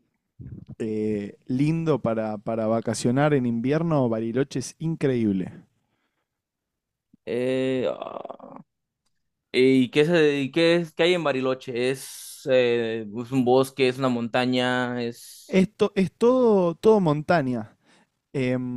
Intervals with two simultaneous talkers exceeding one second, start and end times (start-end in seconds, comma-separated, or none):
none